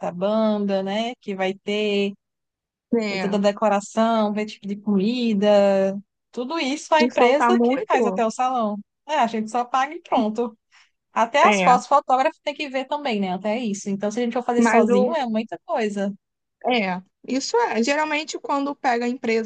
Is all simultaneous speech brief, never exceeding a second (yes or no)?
no